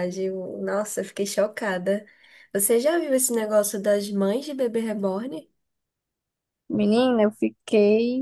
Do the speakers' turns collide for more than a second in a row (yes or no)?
no